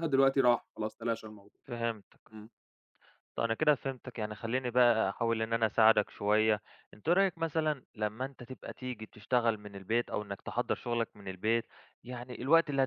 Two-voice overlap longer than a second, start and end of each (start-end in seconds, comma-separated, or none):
none